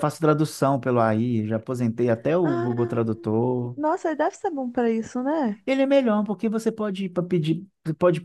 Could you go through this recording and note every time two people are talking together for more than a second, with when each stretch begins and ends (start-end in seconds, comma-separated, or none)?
none